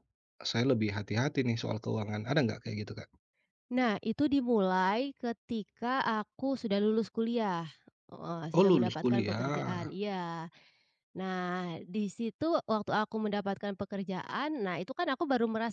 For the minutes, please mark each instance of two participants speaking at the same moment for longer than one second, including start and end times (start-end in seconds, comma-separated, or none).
8.6-9.9